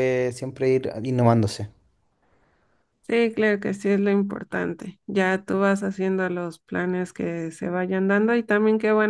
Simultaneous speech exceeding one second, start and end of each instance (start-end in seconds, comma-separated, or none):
none